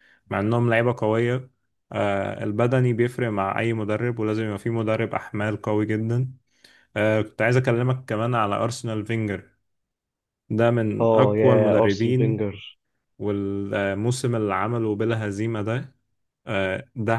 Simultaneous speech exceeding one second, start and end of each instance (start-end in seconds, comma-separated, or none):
11.0-12.5